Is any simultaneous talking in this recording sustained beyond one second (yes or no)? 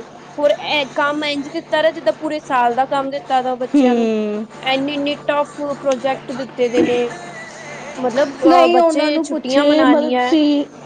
yes